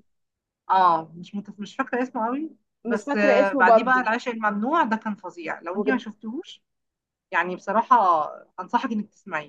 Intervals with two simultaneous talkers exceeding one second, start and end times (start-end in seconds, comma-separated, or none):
2.9-4.1